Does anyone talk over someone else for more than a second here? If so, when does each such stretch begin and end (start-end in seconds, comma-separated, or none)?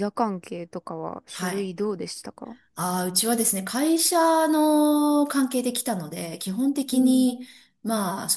none